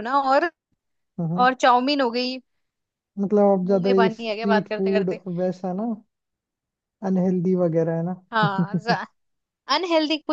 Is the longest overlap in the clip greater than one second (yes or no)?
yes